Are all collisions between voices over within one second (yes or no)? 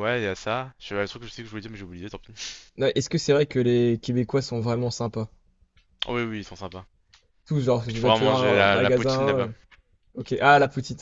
no